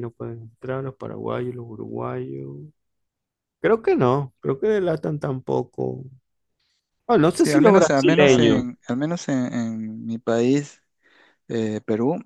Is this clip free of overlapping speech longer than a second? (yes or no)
no